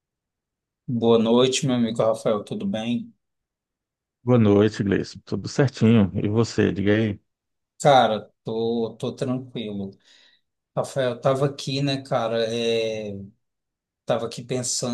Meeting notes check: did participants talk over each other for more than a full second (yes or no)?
no